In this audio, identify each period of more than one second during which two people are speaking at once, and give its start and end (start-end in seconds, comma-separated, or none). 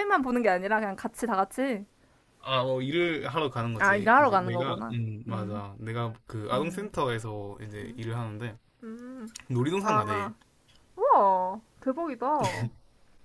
3.8-5.6